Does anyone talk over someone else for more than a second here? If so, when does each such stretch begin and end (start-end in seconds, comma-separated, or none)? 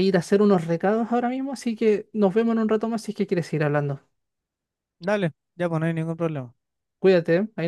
none